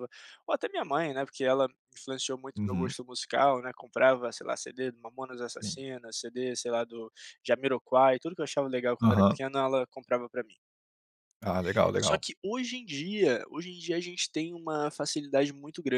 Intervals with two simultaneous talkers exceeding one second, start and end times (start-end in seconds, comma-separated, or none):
none